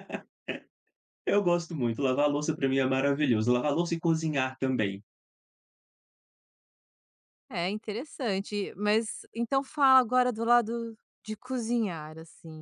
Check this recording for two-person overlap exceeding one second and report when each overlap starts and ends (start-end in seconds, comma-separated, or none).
none